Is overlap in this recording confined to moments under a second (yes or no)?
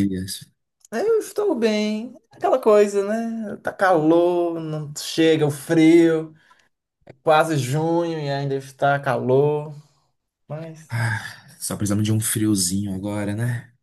yes